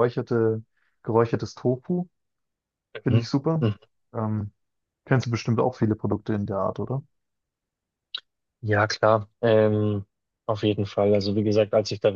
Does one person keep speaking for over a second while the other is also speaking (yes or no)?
no